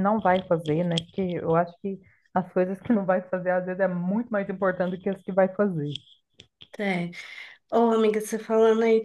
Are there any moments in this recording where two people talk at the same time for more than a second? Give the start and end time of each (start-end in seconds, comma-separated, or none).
none